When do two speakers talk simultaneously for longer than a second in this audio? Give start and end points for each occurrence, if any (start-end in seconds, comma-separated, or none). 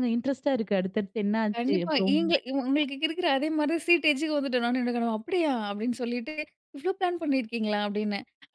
none